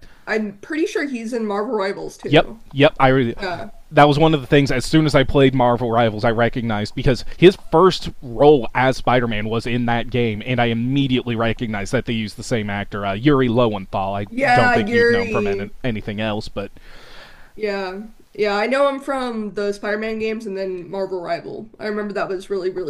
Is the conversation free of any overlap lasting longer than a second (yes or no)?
no